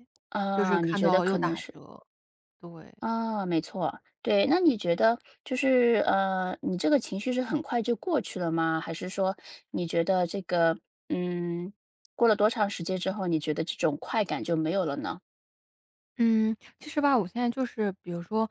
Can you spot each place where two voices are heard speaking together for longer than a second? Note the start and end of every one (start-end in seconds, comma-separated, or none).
0.5-1.8